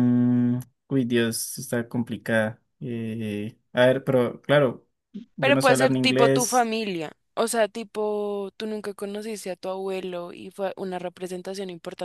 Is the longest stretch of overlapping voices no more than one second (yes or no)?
no